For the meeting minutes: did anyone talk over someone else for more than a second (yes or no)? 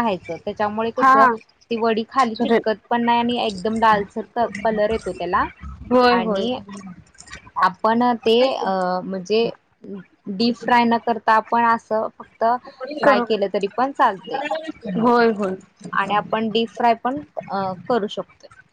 no